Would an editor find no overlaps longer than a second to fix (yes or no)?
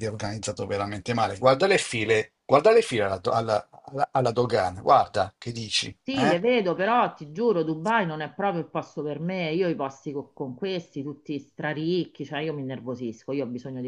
yes